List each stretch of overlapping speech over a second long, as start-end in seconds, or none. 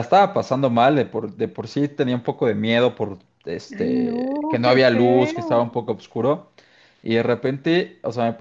3.8-5.6